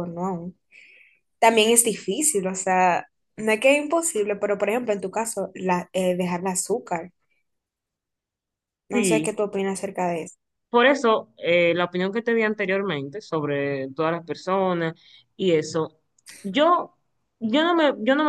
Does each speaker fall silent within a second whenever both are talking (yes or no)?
yes